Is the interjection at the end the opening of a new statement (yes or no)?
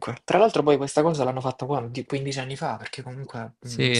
yes